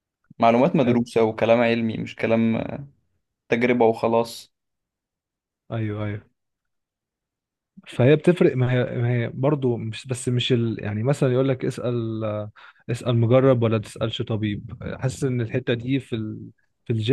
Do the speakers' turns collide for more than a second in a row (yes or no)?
no